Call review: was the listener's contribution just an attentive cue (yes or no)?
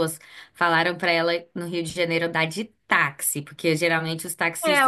no